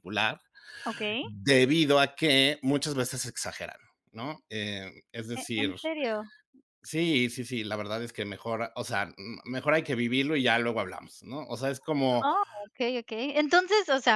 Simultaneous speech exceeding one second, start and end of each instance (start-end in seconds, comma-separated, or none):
none